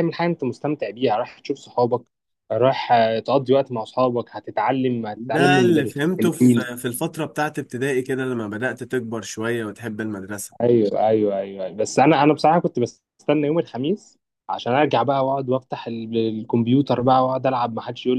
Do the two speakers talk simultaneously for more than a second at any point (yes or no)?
yes